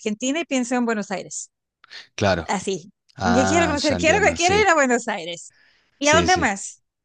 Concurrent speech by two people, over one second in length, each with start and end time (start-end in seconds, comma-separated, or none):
3.2-4.7